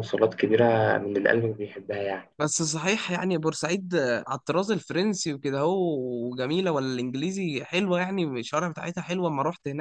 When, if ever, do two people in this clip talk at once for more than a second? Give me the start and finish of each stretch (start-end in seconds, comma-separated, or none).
none